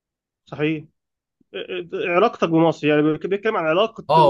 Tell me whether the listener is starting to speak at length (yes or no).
yes